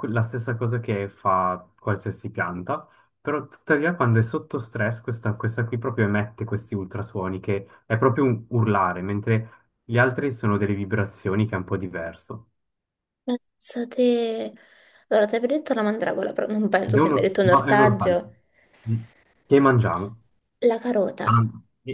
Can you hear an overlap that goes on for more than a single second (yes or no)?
yes